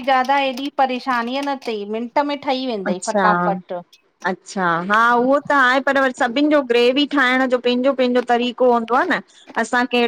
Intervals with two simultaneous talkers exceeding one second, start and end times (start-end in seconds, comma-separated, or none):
none